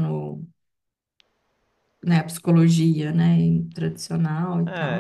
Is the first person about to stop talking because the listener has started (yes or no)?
yes